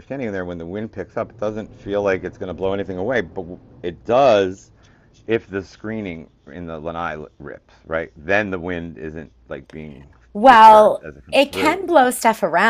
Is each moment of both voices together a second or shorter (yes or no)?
no